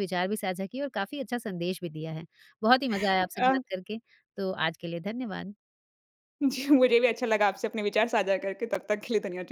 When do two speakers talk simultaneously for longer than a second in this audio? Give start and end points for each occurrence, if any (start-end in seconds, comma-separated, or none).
none